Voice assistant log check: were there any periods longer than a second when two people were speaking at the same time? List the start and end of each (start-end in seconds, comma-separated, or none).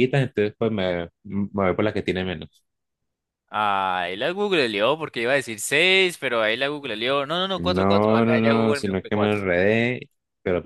7.5-9.4